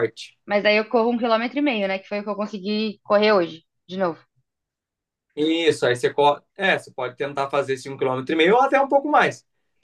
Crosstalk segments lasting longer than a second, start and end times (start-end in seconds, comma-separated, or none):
none